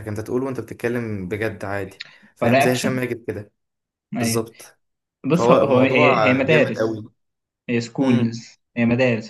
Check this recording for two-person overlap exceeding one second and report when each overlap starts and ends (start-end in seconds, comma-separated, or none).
5.3-7.0